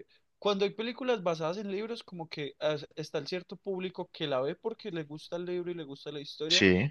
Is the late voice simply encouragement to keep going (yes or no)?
yes